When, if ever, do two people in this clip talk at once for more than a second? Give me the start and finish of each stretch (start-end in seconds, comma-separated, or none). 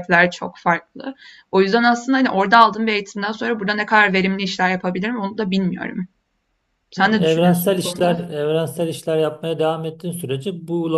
7.0-8.2